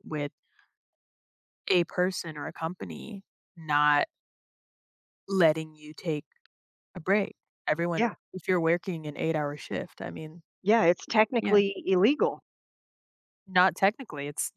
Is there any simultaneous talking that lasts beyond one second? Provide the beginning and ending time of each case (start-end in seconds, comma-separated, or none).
none